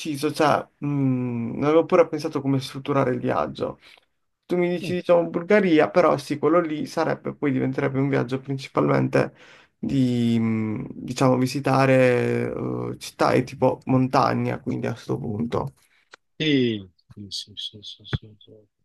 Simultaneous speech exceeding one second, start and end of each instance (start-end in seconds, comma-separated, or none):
none